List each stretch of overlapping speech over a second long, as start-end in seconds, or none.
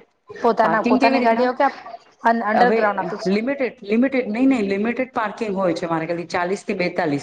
0.7-2.8